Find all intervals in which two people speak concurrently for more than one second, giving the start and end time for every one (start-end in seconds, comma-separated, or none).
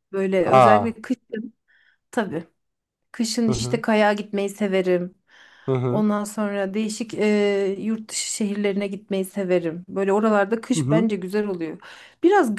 none